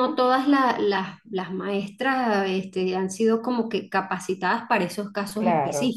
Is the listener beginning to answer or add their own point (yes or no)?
yes